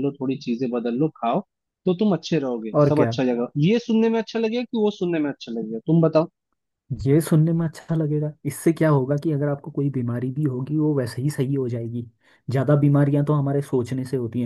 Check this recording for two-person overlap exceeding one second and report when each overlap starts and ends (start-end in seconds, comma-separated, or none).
none